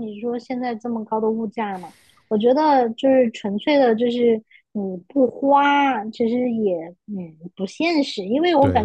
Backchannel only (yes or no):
yes